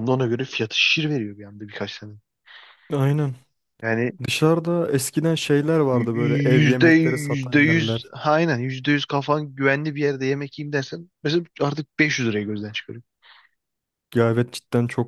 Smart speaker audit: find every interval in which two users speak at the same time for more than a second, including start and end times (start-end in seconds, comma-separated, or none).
5.9-8.1